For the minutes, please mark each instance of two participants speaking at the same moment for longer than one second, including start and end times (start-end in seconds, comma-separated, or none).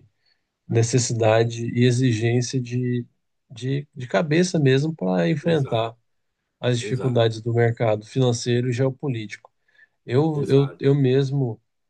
none